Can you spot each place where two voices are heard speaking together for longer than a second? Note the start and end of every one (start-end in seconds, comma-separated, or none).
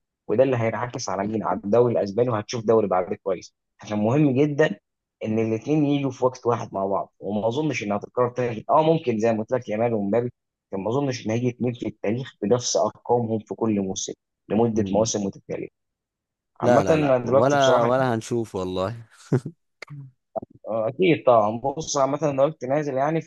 16.6-17.9